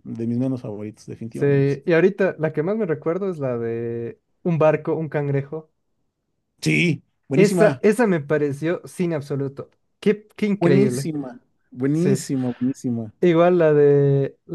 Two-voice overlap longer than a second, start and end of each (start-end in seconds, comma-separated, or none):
none